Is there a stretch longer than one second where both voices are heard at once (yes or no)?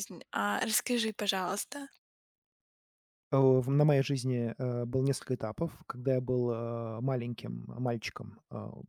no